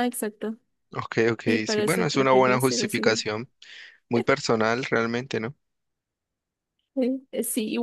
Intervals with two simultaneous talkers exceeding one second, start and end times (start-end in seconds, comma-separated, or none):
1.4-3.2